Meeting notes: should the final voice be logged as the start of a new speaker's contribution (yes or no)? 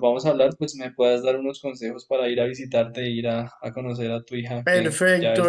yes